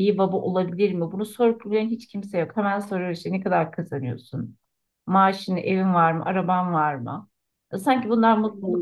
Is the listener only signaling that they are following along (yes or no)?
no